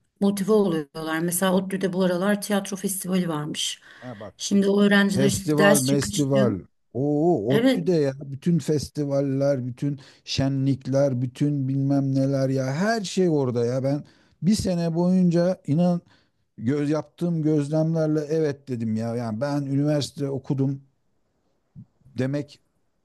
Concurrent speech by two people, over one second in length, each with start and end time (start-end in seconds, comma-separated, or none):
5.2-6.5